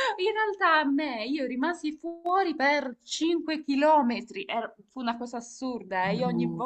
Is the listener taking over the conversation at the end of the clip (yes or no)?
no